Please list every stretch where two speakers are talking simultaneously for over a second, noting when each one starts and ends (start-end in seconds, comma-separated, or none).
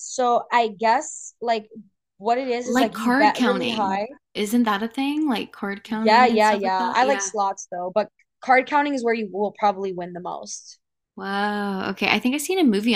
2.6-4.1, 6.0-7.3